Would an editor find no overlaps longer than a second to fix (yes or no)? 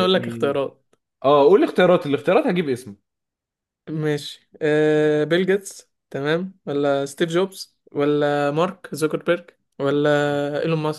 yes